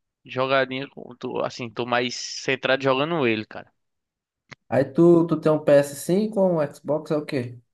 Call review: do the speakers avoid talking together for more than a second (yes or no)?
yes